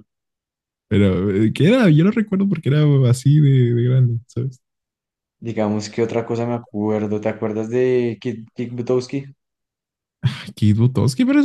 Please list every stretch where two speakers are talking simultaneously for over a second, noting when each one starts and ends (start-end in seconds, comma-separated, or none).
none